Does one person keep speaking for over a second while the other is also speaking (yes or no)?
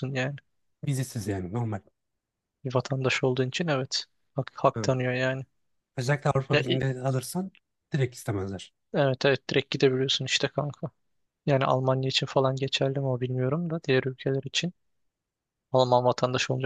no